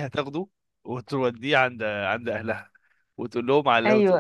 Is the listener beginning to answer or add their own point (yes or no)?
no